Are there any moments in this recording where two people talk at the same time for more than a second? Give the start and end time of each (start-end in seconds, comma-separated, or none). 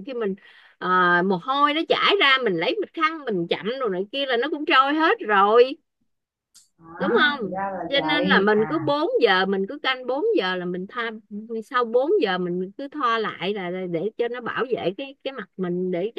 7.0-8.8